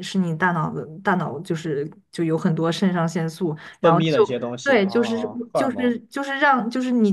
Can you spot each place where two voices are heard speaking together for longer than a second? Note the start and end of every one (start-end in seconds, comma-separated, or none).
3.8-6.0